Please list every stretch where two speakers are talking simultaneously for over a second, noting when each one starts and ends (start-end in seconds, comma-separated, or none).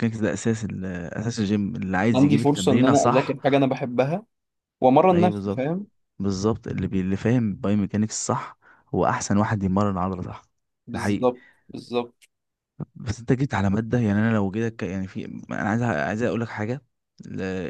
2.1-3.4